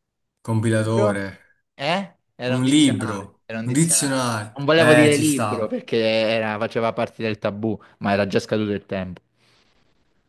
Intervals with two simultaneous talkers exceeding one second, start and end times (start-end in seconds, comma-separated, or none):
2.5-5.8